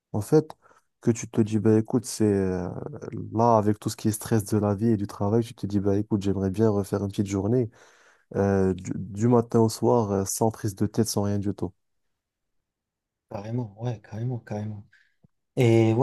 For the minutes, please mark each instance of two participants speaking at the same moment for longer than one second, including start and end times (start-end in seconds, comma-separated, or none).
none